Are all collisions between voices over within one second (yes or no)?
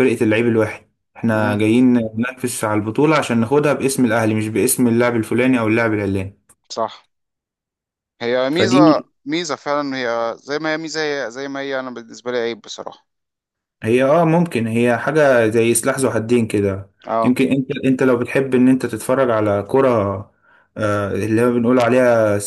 yes